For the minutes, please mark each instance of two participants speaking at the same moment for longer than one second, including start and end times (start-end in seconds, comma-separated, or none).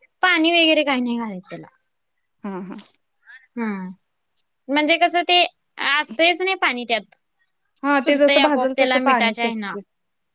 8.0-9.8